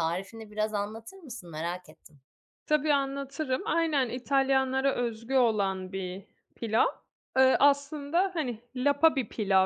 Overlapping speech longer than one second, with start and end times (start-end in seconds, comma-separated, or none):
none